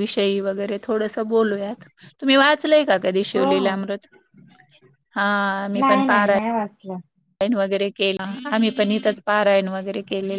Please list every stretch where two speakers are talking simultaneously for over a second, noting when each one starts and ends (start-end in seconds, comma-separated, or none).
none